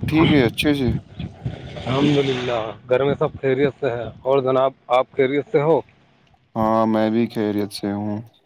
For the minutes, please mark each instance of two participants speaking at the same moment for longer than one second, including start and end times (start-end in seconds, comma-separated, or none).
none